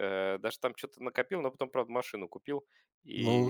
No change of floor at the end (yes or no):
no